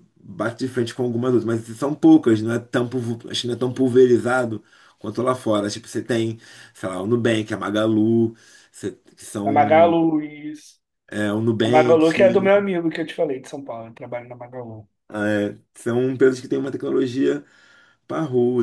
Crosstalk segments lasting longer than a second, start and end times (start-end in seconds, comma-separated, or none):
none